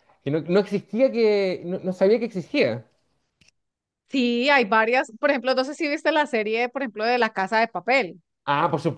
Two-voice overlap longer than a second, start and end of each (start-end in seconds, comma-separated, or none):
none